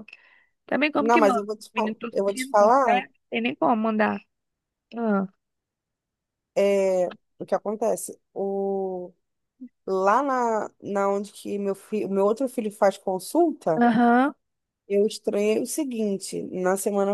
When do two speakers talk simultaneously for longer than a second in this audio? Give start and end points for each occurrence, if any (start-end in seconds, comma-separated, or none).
1.0-3.0